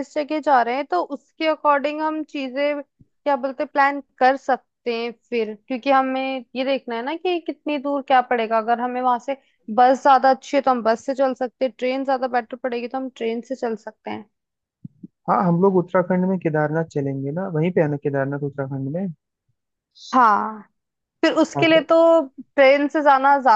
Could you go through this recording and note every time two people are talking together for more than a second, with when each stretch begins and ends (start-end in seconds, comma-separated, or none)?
none